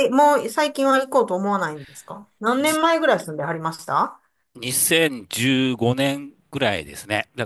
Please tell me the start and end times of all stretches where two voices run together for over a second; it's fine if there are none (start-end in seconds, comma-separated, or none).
none